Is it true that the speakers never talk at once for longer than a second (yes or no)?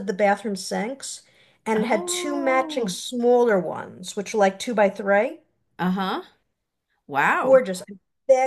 no